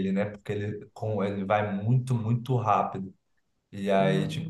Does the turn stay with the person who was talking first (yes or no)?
yes